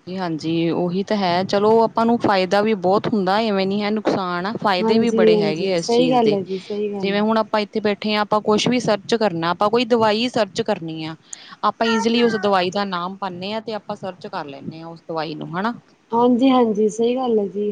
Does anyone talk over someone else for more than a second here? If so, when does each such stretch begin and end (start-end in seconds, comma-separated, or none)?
4.8-6.4